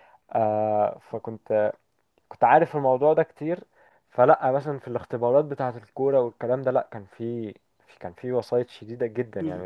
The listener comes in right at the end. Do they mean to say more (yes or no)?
yes